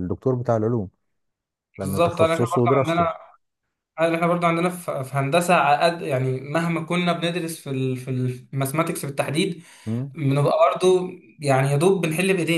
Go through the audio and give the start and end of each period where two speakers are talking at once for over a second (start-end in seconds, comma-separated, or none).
1.8-3.1